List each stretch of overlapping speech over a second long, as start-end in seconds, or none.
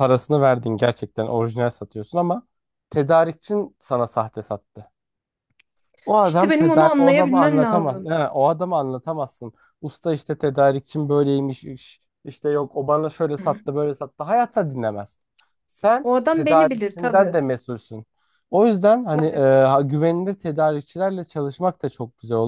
6.2-8.1, 16.0-17.4